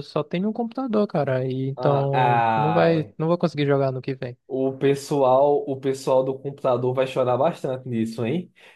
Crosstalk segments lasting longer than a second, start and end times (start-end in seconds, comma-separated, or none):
1.8-3.1